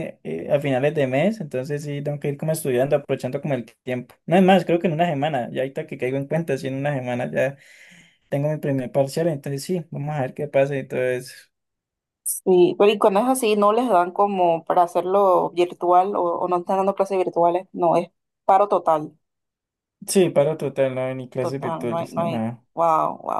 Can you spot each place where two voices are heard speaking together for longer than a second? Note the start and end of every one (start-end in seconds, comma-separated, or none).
21.4-22.6